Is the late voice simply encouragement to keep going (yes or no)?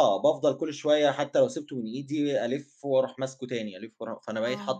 no